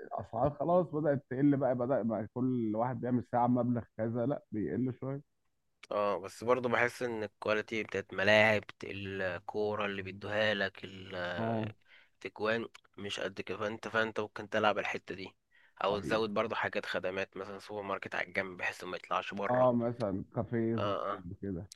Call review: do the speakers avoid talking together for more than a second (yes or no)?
yes